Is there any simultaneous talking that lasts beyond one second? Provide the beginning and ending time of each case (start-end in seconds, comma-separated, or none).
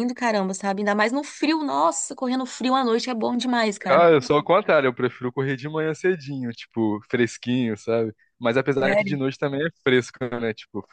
none